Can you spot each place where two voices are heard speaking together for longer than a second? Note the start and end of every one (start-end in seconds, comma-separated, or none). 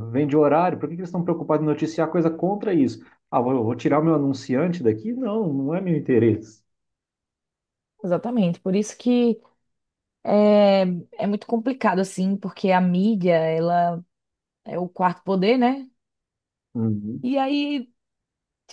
none